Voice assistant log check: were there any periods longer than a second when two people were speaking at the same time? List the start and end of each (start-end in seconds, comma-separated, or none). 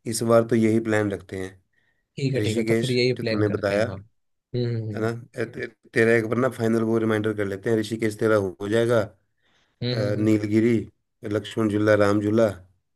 2.4-4.3